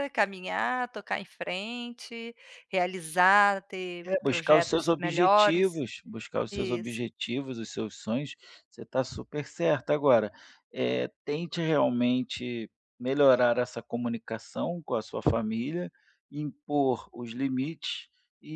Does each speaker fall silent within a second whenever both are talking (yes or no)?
no